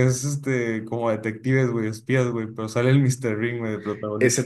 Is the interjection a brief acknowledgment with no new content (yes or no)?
no